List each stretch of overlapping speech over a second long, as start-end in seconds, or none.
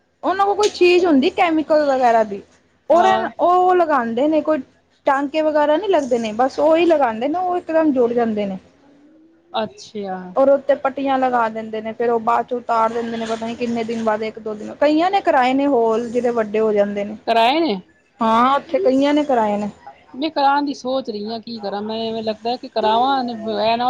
none